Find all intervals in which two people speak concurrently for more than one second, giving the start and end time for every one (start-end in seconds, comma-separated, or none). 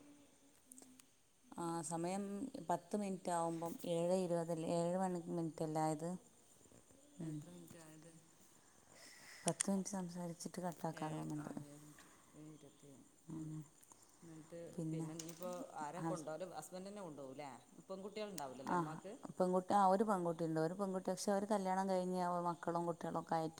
none